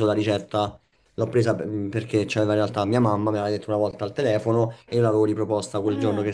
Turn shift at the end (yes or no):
no